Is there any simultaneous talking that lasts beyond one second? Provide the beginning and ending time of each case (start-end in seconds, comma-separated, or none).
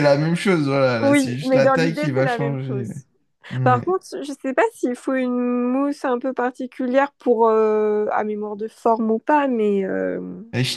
1.0-2.9